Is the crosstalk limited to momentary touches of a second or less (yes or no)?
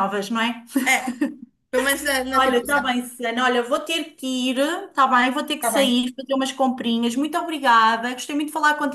yes